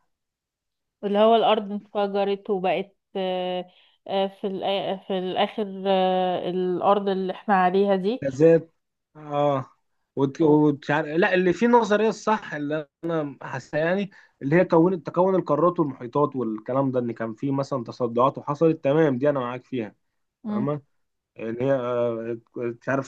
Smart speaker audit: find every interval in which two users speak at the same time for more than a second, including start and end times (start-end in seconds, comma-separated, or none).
none